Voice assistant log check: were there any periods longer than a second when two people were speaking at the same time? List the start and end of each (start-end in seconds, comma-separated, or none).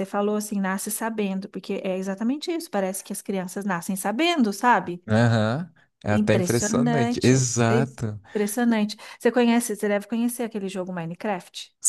6.1-8.2